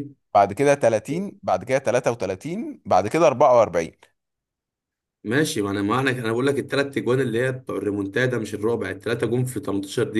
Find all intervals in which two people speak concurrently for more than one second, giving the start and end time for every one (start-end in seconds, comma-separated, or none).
none